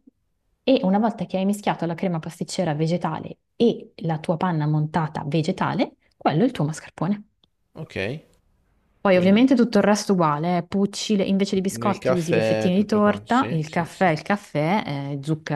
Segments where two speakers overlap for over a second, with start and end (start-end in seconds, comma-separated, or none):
11.7-14.1